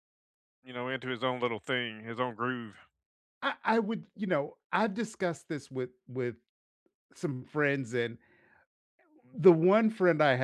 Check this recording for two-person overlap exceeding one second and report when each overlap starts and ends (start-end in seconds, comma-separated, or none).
none